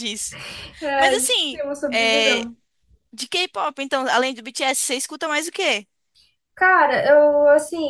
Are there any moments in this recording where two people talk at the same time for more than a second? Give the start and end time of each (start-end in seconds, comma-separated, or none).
1.0-2.5